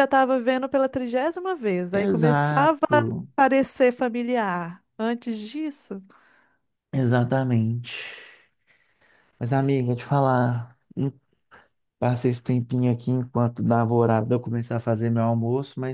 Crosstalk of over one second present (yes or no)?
yes